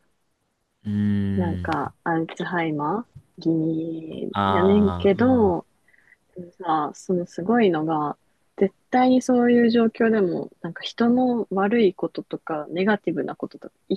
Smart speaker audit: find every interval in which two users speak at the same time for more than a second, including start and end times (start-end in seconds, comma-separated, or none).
4.3-5.5